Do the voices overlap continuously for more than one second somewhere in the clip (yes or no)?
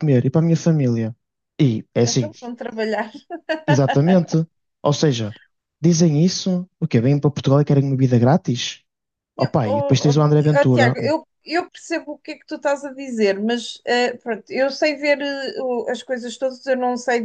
yes